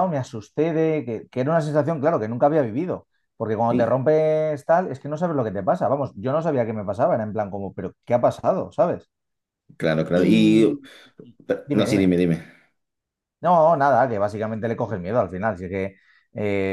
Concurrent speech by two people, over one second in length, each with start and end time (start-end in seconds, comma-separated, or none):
none